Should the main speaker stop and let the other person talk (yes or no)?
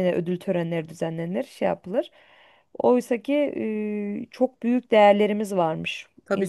yes